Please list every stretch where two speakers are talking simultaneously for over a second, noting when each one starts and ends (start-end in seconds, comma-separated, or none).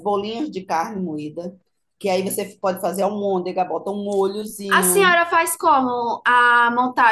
none